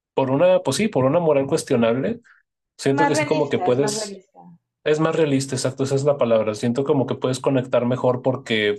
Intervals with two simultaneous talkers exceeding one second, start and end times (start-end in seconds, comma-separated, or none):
2.9-4.2